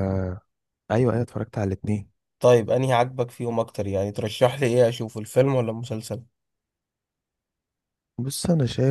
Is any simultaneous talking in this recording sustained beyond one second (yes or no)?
no